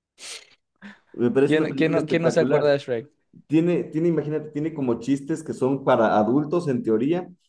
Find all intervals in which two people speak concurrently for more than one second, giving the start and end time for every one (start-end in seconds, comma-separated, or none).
1.4-2.7